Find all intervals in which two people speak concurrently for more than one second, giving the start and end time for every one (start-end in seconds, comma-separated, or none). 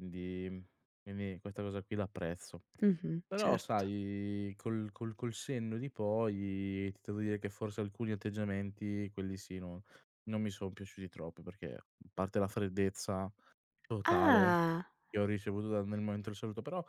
none